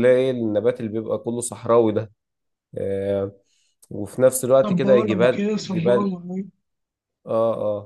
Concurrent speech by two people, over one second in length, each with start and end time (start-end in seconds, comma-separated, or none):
4.6-6.1